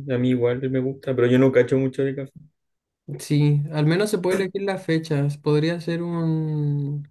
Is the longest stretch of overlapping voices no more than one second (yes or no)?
yes